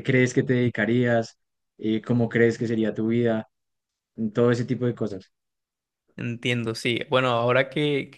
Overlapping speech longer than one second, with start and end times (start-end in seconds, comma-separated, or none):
none